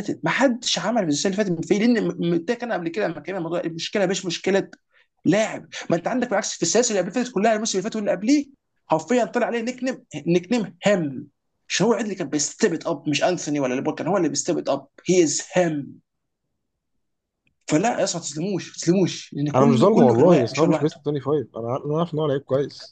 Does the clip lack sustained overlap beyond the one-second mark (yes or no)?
no